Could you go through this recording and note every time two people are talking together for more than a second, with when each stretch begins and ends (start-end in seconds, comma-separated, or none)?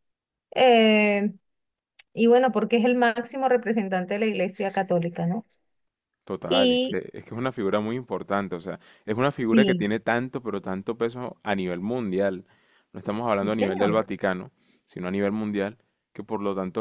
none